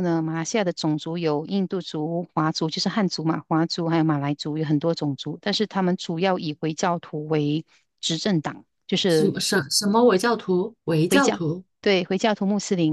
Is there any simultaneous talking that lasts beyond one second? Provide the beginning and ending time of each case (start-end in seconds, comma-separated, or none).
none